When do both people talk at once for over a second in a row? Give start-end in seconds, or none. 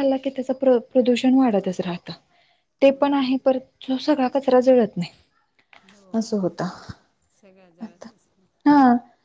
none